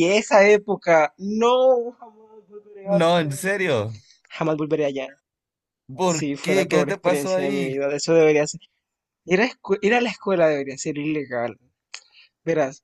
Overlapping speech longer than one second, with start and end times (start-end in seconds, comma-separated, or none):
6.0-7.7